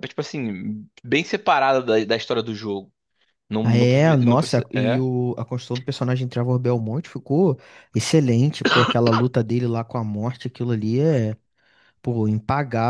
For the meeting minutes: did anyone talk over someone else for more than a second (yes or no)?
yes